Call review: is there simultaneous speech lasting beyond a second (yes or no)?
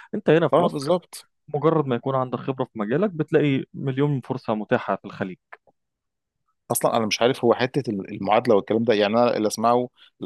no